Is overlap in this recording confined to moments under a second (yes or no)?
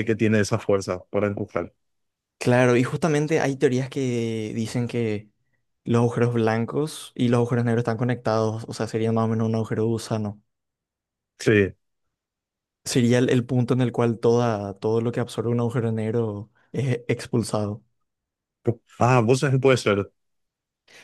yes